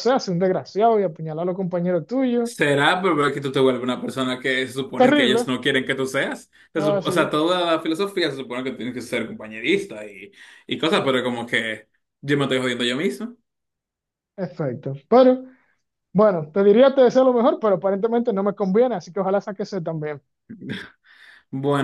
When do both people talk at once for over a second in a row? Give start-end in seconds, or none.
none